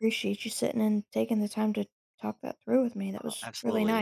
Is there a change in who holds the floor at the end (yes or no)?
yes